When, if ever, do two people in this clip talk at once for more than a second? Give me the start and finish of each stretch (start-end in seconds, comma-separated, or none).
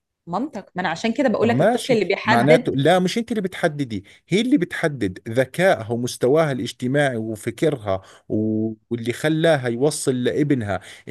1.4-2.7